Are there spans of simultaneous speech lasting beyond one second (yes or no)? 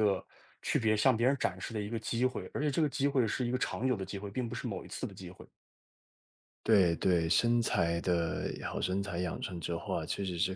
no